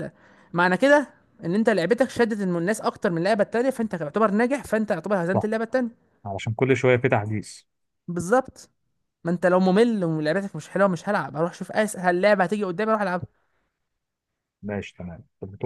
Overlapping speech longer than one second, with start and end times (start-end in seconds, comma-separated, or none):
none